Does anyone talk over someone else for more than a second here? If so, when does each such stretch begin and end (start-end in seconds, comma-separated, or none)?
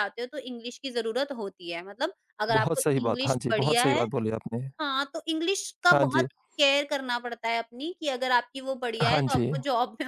2.5-4.0